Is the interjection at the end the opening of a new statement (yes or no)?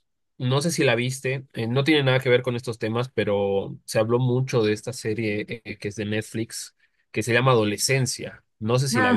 yes